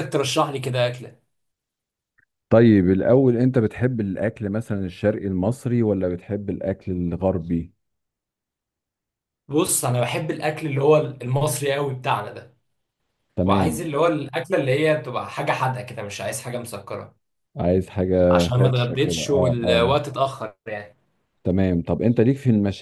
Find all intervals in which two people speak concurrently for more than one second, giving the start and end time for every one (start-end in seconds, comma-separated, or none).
18.3-19.9